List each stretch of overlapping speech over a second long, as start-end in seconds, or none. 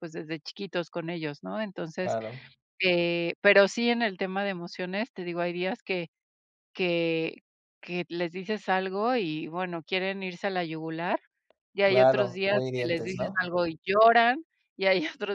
11.8-13.4